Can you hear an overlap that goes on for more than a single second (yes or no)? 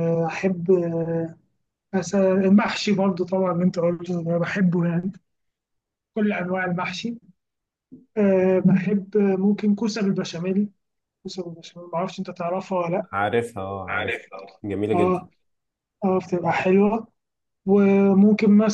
no